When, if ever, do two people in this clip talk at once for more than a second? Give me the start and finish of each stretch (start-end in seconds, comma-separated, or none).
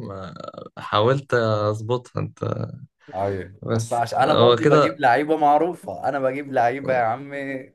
3.6-5.0